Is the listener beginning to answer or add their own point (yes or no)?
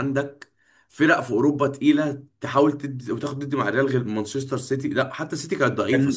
yes